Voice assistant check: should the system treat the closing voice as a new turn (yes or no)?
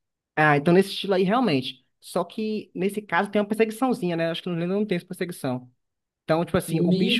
yes